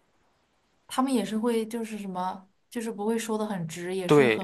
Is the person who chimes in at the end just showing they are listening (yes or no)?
no